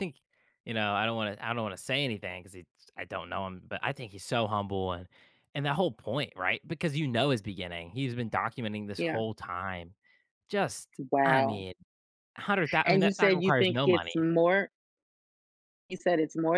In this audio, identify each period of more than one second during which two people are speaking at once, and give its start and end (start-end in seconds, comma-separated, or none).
12.8-14.1